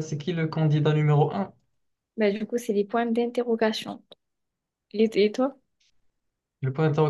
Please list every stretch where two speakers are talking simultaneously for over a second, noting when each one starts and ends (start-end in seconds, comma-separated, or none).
none